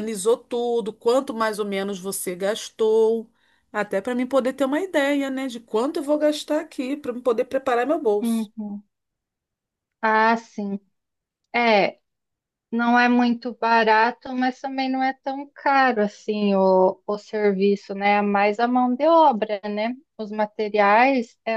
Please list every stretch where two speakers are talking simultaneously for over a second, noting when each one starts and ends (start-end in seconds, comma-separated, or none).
none